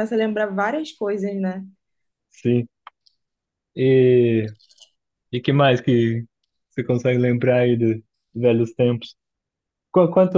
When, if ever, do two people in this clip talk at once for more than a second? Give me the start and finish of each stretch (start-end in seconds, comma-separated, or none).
none